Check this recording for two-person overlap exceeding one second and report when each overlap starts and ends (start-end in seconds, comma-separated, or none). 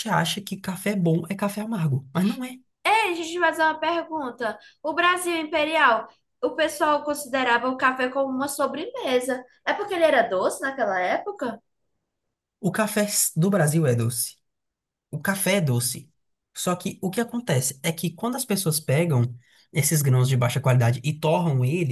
none